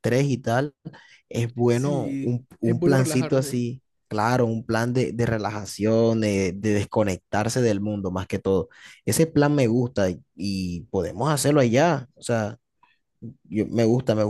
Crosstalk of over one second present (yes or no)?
yes